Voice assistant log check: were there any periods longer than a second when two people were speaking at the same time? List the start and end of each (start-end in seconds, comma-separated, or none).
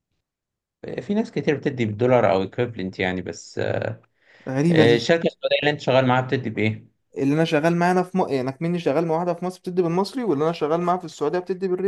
none